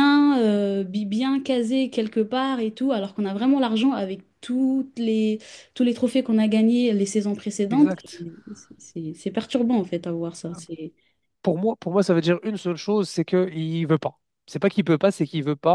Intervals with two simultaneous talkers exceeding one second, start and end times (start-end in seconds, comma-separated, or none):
none